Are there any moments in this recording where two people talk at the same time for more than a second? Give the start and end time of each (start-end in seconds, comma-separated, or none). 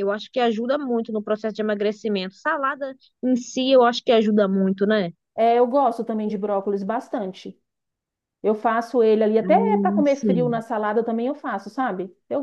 9.4-10.6